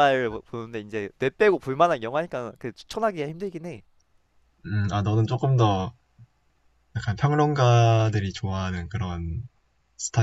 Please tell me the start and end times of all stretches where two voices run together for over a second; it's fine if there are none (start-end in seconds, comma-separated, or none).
none